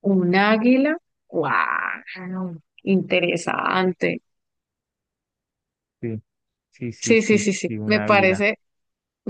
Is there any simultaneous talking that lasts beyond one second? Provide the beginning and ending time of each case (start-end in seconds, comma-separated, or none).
7.0-8.4